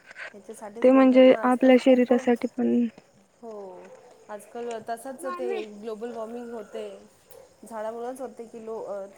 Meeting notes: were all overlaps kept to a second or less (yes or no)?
no